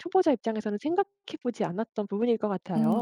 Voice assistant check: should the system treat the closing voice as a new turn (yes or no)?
yes